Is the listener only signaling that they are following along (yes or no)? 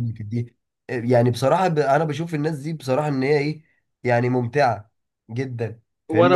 no